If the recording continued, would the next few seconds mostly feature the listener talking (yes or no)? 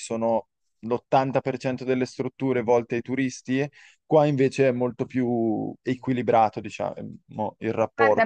yes